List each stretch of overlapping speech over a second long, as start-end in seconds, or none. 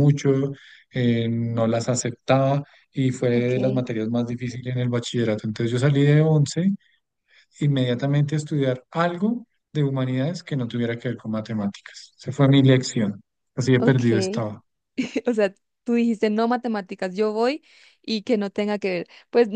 none